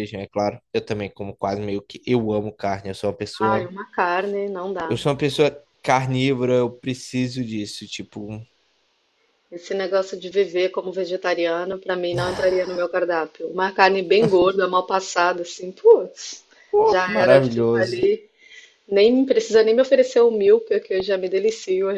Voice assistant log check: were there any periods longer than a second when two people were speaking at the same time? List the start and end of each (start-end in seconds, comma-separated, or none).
16.8-18.1